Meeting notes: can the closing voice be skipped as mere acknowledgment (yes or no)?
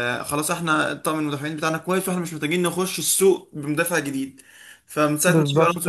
yes